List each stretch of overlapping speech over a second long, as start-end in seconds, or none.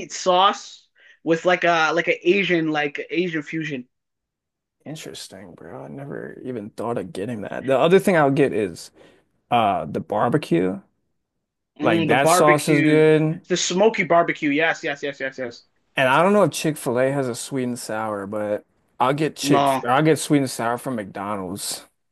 11.8-13.1